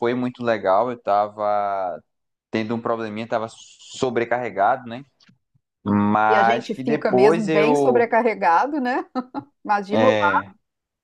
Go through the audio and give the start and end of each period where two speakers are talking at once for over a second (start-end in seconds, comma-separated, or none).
6.3-8.1